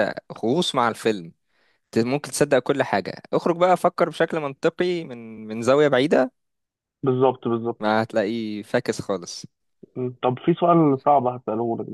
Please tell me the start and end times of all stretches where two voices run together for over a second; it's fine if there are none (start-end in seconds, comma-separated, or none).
none